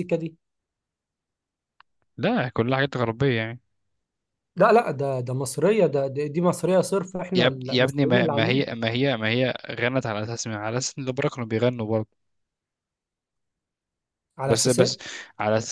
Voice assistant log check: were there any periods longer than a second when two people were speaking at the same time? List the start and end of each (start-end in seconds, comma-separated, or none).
7.3-8.7